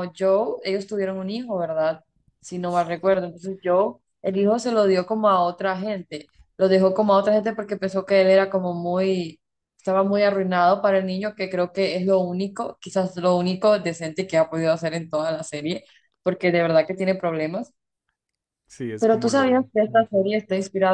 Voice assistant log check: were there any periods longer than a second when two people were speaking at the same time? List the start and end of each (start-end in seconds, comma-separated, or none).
19.0-20.3